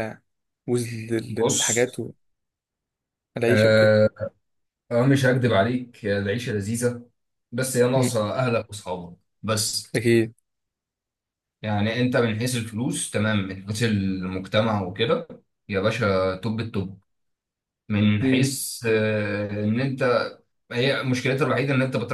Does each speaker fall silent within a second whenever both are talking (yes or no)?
yes